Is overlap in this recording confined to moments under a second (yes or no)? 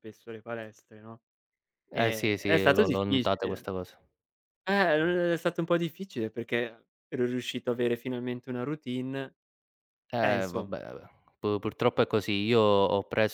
no